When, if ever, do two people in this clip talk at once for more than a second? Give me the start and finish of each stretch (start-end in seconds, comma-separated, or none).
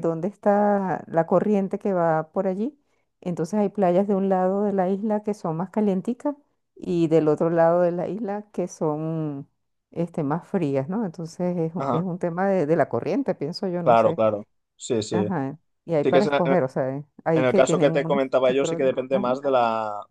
17.3-19.4